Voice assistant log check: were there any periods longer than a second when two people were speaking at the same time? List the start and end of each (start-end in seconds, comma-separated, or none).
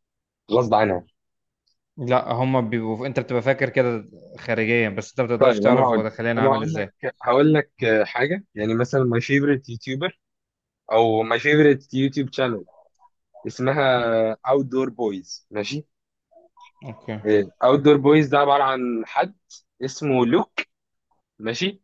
5.4-6.9